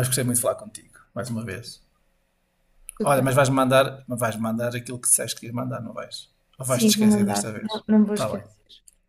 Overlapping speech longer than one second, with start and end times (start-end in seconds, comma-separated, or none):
6.6-8.4